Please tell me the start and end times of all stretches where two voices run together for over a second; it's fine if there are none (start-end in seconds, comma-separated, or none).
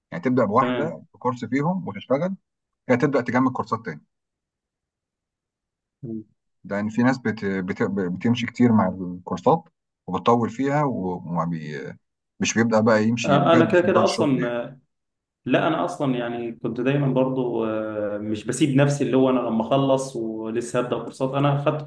13.2-14.6